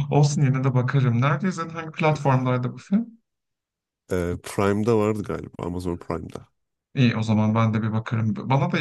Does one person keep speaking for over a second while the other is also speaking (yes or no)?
no